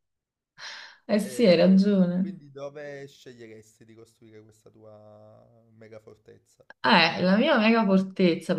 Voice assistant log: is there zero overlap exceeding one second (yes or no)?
no